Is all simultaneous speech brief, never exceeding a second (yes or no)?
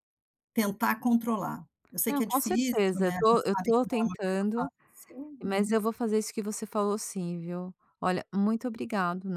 no